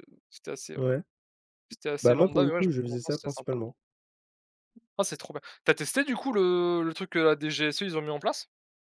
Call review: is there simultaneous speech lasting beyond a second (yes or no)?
yes